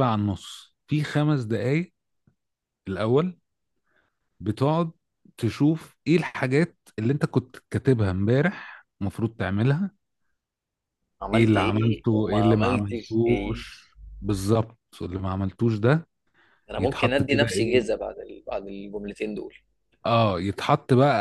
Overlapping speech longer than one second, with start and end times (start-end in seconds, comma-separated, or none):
11.3-13.6, 16.8-18.0